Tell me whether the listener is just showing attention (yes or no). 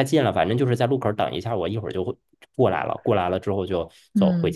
no